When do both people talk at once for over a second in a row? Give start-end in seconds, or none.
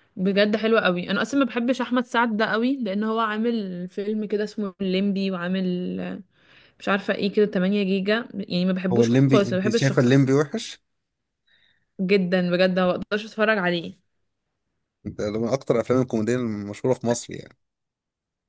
8.9-10.1